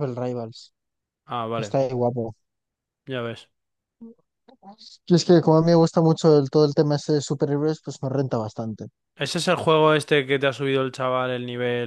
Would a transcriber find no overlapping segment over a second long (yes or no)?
yes